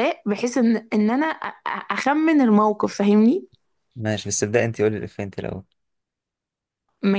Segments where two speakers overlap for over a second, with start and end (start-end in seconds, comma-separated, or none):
none